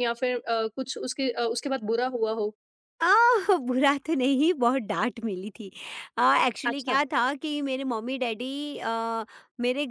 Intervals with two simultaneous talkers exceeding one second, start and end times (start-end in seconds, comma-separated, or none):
none